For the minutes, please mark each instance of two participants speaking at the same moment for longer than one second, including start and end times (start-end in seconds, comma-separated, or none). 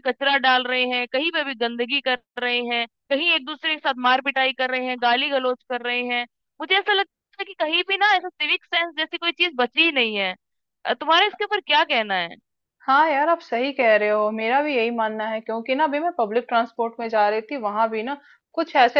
none